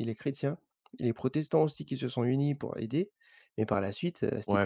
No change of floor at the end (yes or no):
no